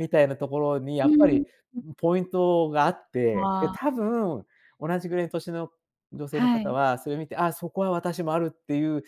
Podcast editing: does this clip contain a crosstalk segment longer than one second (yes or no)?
no